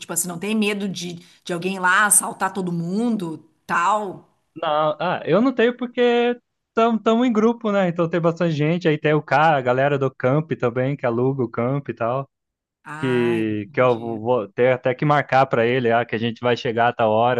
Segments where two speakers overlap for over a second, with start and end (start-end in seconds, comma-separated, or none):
13.0-14.2